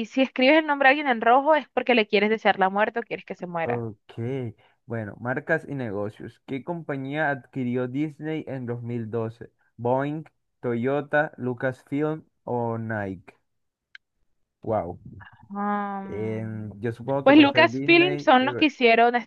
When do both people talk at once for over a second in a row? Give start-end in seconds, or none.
17.2-18.7